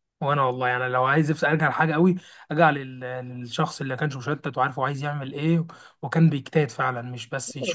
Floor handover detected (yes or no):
yes